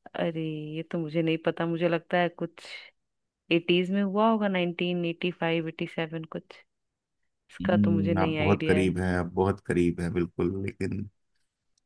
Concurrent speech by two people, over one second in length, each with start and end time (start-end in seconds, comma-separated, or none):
7.6-8.9